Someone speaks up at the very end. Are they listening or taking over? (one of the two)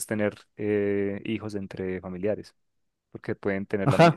taking over